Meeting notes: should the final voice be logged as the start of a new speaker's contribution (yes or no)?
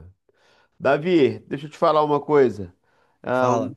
no